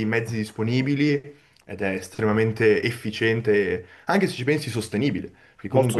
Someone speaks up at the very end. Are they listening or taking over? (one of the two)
listening